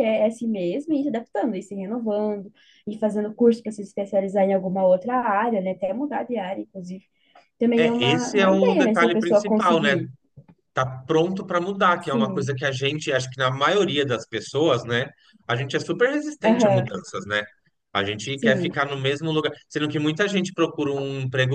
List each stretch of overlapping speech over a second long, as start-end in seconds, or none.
7.8-9.9